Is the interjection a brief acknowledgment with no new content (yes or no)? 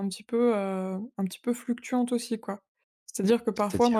yes